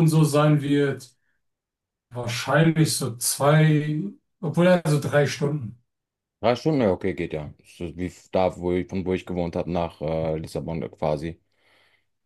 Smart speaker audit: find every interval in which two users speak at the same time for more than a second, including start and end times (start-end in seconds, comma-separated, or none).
none